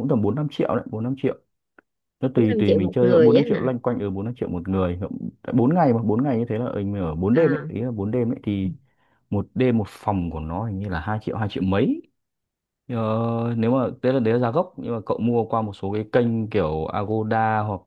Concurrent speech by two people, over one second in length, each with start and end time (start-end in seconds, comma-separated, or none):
2.3-3.7